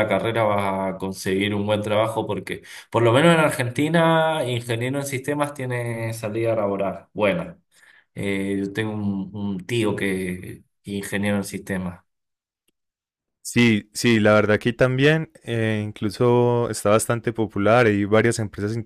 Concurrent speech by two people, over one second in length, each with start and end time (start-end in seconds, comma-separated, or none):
none